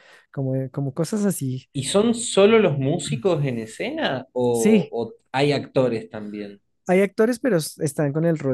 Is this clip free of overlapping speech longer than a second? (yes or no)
yes